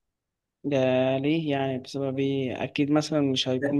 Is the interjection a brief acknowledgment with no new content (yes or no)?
yes